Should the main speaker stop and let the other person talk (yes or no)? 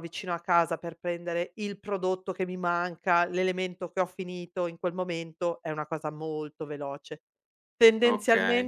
no